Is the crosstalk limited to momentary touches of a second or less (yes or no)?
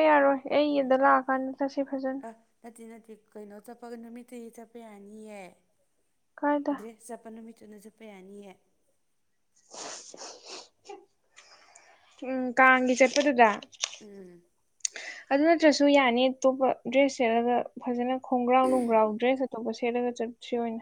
yes